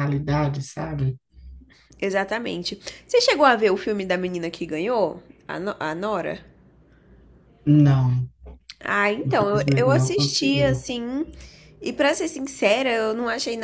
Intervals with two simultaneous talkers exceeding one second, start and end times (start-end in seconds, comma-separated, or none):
9.2-10.8